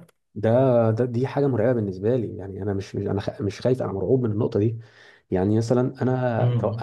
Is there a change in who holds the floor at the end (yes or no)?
no